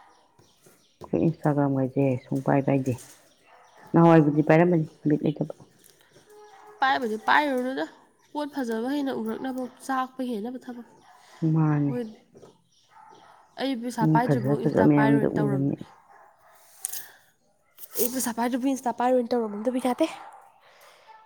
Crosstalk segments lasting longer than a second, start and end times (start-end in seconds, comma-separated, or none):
14.0-15.8